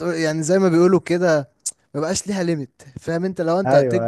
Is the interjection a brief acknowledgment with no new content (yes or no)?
yes